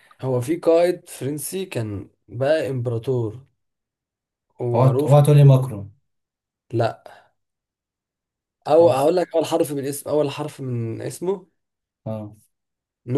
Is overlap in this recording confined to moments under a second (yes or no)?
yes